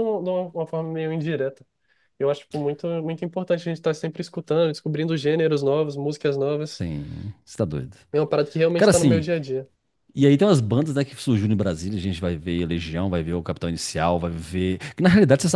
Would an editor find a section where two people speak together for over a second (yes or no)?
no